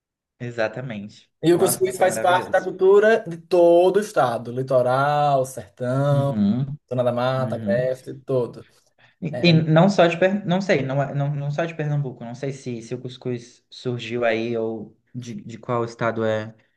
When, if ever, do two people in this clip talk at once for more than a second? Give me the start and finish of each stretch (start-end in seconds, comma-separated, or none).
1.4-2.7